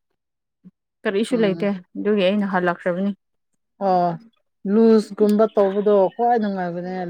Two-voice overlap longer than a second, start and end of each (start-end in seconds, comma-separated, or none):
none